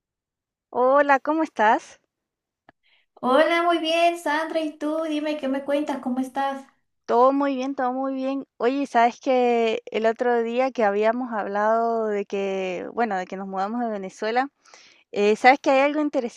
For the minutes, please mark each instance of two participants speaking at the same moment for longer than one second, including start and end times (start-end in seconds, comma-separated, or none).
none